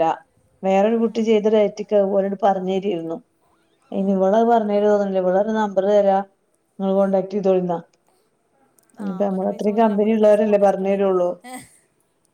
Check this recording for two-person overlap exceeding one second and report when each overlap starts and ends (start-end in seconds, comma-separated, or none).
9.1-11.0